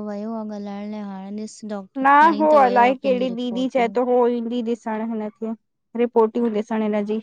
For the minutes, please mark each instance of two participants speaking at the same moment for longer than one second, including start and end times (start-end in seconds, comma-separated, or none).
2.0-4.0